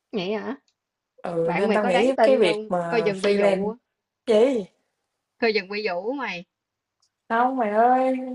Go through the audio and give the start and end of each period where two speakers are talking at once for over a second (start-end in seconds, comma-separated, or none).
1.4-3.7